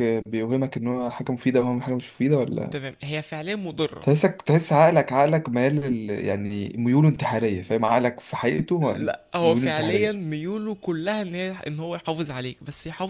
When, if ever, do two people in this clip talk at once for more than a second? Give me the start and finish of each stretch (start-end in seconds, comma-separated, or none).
8.8-10.3